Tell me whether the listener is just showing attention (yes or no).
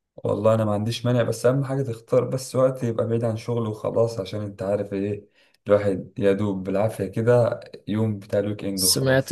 no